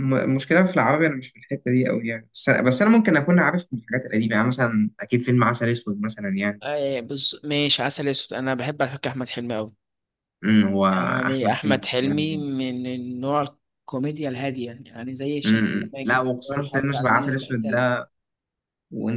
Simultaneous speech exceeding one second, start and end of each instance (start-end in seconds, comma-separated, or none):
11.3-12.5, 15.4-17.9